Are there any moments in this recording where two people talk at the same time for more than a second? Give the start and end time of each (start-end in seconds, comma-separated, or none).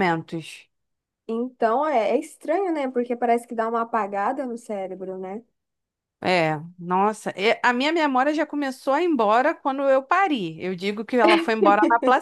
none